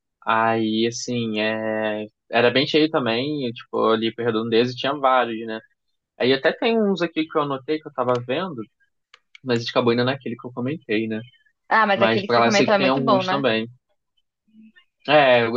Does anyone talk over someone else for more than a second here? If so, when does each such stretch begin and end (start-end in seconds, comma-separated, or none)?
11.9-13.5